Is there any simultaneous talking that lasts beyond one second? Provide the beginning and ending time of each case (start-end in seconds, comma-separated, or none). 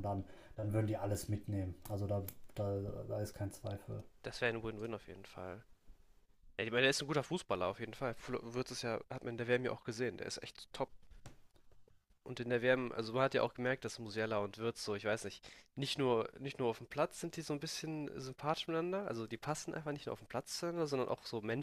none